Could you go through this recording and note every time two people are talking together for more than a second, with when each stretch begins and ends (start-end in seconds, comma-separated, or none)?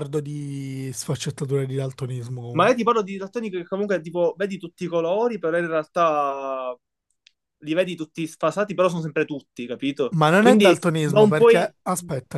10.1-11.8